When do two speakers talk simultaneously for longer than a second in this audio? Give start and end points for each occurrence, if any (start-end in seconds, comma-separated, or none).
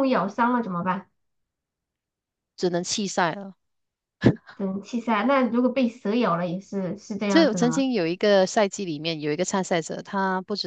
none